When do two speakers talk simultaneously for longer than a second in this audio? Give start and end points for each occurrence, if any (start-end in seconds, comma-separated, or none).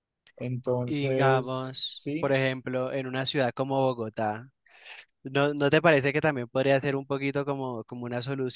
0.8-2.3